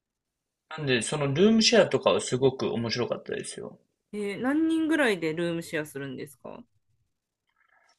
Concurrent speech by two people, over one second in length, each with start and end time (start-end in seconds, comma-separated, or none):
none